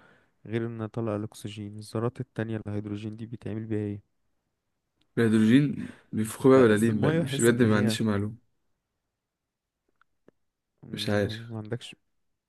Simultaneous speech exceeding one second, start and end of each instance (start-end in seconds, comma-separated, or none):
6.5-8.0